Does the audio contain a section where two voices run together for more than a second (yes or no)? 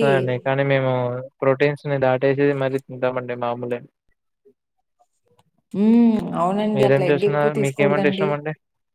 yes